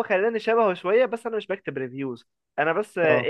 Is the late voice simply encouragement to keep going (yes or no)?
yes